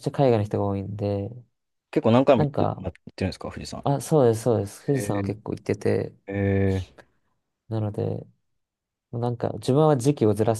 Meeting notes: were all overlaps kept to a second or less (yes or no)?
yes